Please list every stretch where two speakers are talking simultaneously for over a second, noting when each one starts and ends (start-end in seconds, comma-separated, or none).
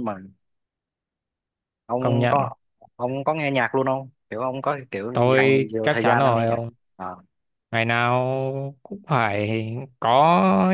5.1-6.6